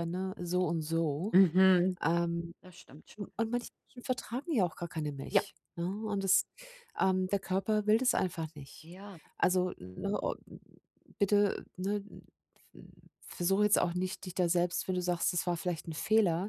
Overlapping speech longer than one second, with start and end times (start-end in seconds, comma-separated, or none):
none